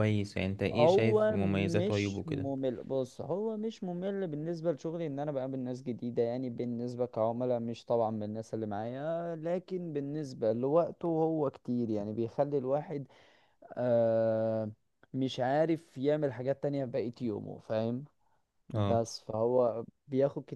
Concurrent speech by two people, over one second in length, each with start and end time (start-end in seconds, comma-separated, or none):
0.7-2.5